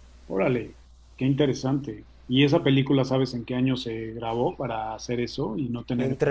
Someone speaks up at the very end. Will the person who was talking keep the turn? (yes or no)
no